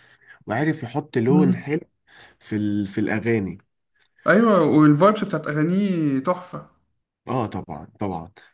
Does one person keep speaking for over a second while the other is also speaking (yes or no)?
no